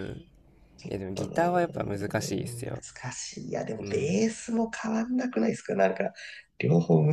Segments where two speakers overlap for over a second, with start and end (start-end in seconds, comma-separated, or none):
none